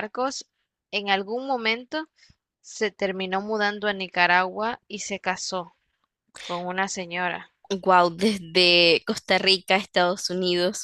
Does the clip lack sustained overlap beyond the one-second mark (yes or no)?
yes